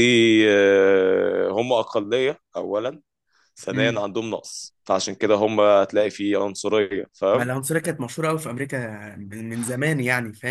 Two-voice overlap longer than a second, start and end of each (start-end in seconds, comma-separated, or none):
none